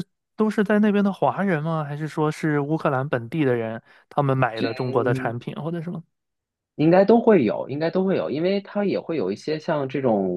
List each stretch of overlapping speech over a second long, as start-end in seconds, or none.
none